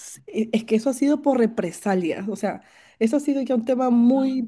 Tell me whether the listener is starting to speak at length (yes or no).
no